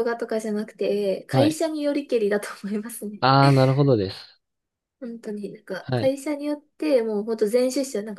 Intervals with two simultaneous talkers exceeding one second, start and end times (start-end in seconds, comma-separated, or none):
none